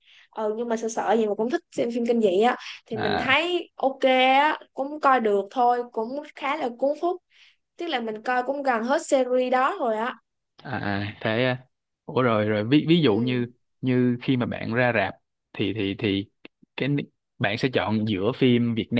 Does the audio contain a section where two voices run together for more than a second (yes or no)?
no